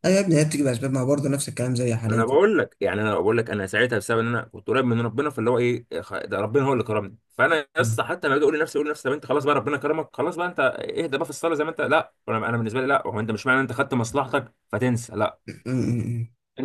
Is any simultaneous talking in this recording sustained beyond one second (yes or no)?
no